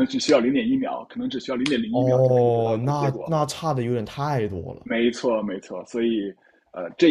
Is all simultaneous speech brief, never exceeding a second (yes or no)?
no